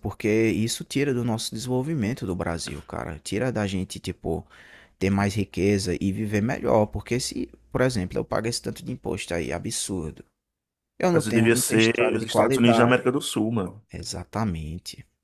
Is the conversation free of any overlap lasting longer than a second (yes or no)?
no